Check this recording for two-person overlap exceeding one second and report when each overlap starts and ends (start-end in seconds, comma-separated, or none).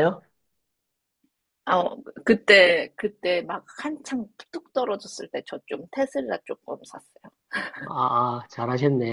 none